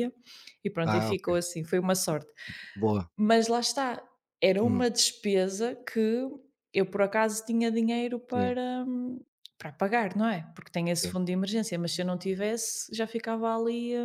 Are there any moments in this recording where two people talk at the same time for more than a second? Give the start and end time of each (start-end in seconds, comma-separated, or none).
none